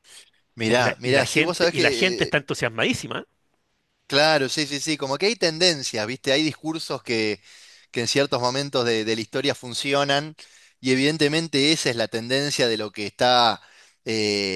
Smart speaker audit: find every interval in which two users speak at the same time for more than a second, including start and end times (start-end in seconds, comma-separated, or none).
0.7-2.3